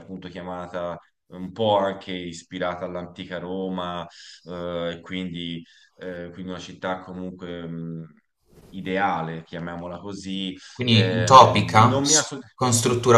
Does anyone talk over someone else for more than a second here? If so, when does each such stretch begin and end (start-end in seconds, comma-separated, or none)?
10.7-12.4